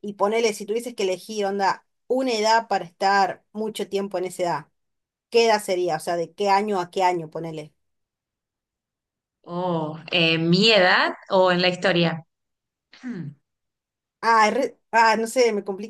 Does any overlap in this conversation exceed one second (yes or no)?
no